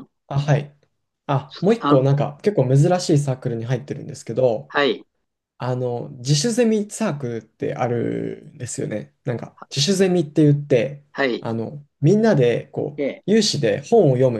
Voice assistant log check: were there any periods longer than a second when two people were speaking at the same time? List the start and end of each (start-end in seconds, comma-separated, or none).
none